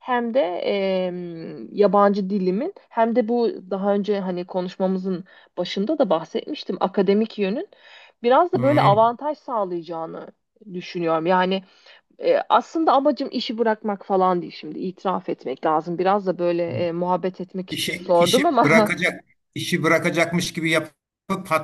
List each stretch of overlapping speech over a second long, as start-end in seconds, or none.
17.7-18.9